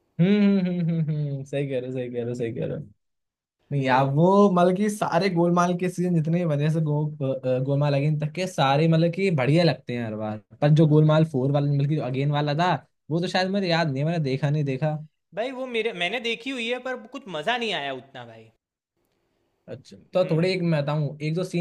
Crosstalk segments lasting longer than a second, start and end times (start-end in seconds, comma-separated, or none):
none